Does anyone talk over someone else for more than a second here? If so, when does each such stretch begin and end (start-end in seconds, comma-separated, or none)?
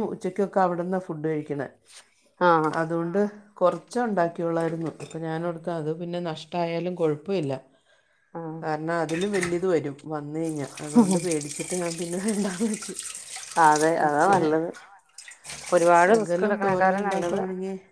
16.1-17.4